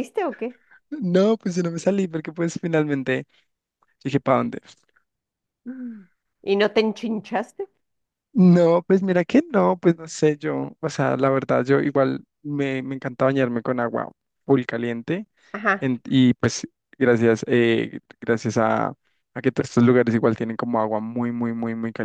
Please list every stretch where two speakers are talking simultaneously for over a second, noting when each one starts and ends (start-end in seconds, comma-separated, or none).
none